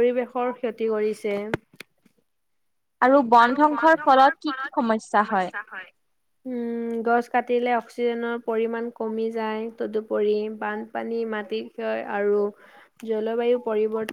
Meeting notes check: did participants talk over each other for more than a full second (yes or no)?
no